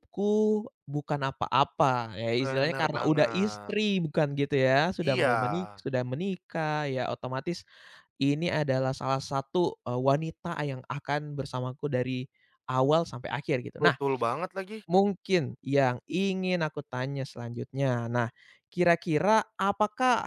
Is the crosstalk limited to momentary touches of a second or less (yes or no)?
no